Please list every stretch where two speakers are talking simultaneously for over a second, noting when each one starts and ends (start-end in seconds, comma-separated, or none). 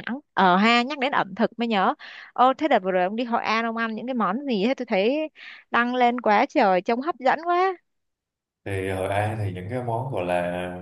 none